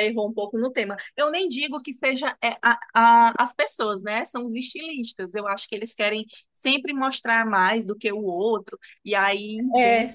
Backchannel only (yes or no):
no